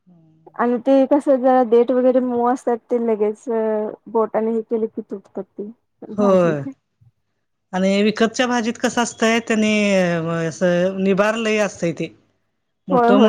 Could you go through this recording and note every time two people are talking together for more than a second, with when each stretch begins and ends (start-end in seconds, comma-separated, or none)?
none